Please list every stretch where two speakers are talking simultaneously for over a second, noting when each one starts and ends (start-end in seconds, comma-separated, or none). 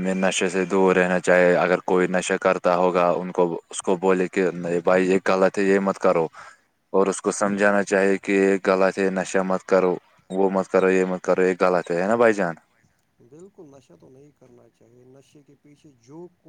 none